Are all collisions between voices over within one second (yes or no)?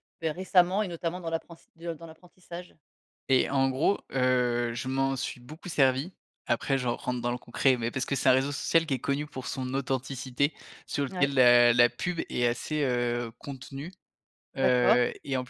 yes